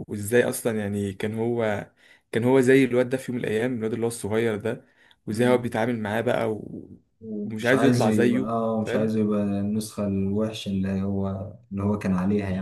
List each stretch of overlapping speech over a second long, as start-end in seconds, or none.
7.4-9.1